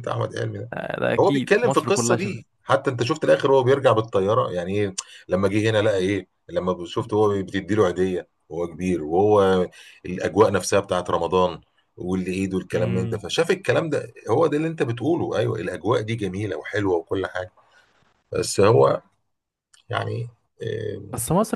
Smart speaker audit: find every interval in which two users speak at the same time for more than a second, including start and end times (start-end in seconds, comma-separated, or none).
1.2-2.4